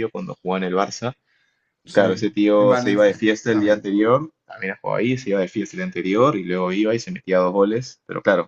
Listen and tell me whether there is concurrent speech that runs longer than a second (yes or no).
yes